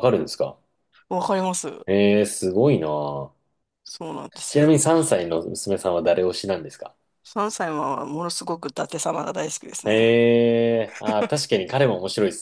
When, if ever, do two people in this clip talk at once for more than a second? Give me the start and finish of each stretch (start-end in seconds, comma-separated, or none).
none